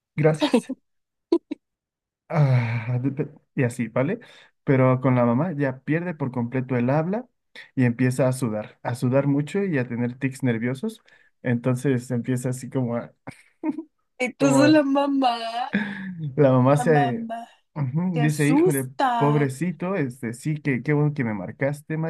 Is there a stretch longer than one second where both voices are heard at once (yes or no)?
yes